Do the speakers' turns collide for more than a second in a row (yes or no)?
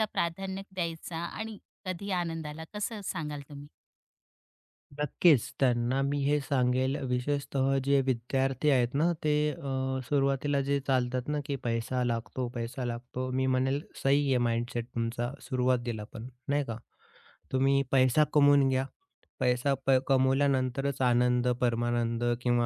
no